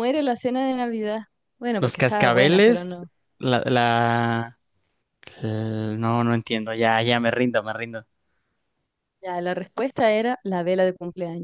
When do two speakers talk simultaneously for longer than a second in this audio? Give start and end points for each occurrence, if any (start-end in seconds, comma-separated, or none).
1.8-3.1